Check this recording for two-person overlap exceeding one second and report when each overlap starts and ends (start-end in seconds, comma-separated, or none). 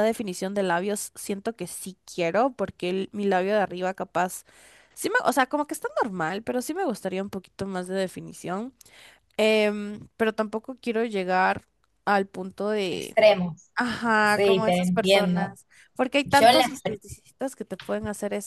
14.2-15.6